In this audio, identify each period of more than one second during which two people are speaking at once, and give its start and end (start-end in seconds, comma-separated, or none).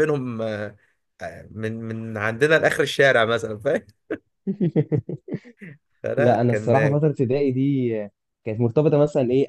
none